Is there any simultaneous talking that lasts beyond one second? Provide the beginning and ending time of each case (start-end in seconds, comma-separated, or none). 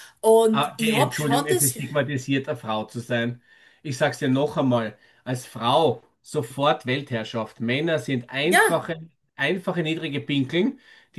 0.5-1.8